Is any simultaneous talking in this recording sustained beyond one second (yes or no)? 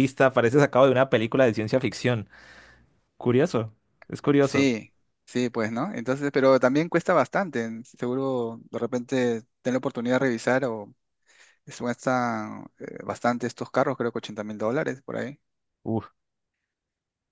no